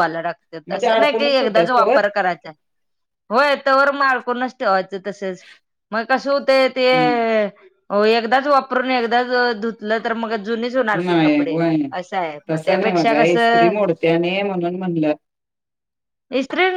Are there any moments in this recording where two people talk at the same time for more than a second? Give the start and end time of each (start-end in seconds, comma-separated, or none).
0.7-2.0